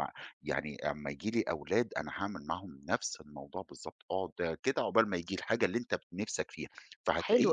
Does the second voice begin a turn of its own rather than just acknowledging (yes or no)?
yes